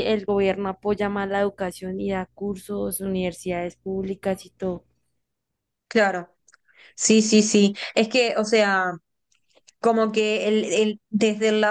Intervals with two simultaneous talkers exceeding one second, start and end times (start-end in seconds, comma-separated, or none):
none